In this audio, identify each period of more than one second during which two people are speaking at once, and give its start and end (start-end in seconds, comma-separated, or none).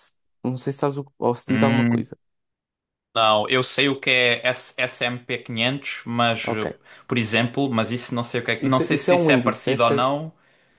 8.6-10.1